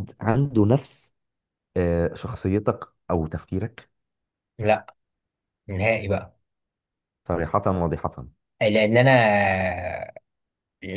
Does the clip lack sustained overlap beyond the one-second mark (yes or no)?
yes